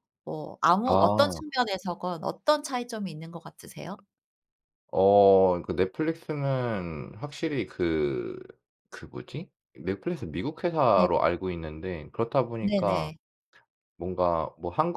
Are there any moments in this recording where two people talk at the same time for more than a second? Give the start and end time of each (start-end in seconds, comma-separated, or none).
none